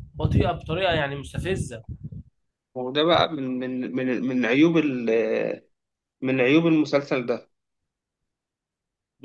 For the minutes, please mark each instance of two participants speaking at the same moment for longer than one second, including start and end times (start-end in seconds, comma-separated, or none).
none